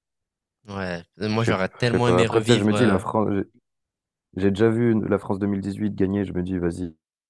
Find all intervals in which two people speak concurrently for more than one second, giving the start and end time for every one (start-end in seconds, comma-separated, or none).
1.3-3.0